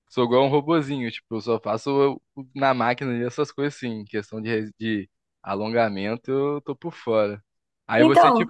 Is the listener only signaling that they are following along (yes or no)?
yes